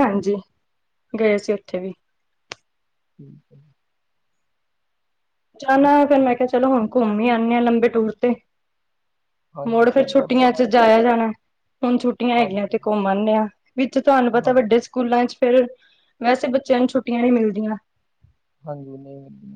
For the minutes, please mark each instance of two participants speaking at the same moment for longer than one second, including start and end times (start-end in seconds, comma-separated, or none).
9.7-11.2